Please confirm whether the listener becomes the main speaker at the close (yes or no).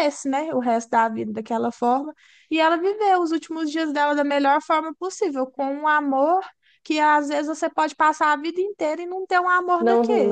yes